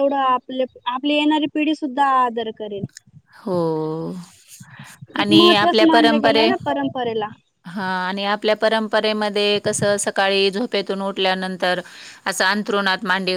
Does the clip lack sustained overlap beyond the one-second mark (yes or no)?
no